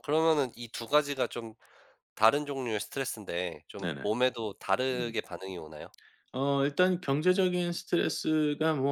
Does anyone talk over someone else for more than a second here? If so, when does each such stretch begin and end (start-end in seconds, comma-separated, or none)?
none